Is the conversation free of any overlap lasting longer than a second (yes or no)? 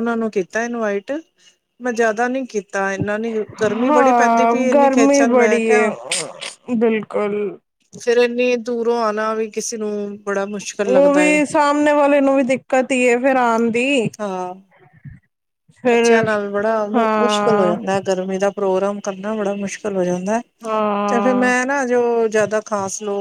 no